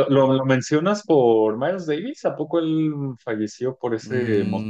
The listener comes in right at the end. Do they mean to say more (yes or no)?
yes